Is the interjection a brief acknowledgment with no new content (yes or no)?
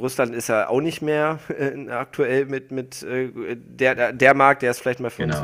yes